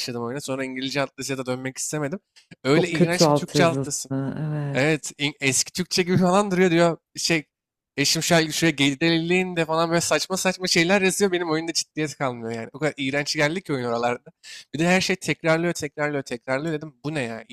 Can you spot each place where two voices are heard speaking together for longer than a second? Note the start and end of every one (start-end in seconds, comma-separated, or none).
2.7-4.1